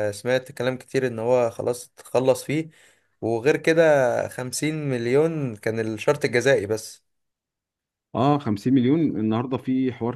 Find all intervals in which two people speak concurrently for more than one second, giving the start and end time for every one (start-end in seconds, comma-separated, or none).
none